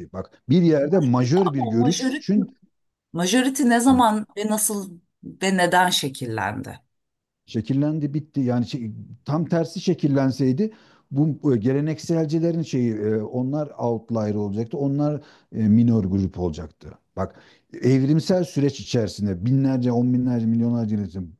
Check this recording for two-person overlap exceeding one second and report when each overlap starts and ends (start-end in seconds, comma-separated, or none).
0.8-2.3